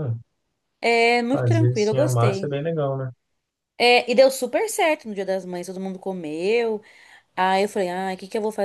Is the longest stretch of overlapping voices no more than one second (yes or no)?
no